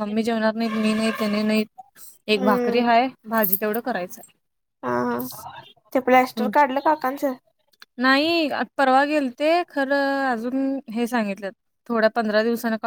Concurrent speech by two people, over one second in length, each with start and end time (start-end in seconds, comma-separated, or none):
none